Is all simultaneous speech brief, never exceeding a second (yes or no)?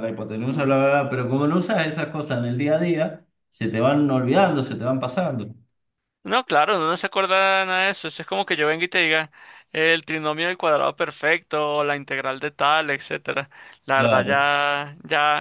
yes